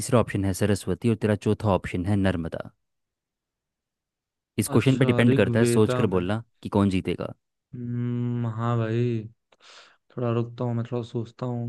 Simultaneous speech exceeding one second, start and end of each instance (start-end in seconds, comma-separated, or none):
4.8-6.2